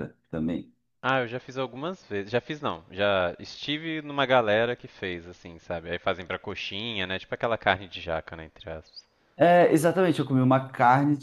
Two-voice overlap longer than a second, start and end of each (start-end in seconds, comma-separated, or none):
none